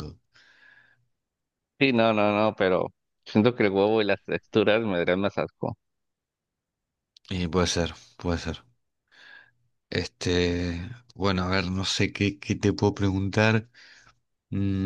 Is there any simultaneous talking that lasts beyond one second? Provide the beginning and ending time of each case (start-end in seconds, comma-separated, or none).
none